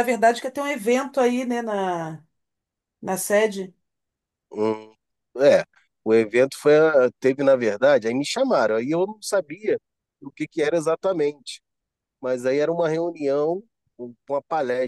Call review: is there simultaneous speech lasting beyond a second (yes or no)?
no